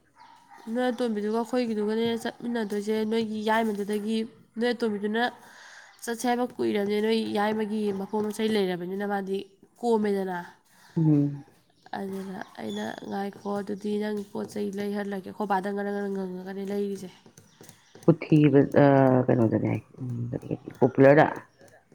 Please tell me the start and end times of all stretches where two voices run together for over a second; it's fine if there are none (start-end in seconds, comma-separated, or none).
none